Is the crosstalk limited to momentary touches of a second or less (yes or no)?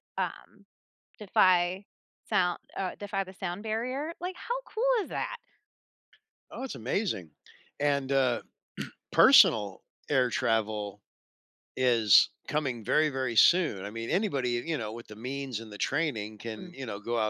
yes